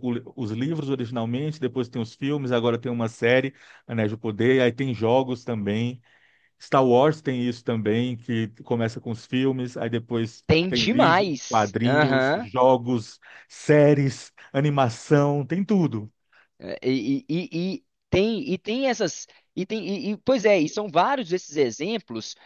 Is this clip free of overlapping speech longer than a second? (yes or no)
no